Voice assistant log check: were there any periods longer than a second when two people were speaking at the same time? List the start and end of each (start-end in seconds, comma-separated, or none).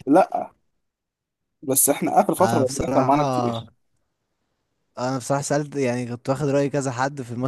2.4-3.6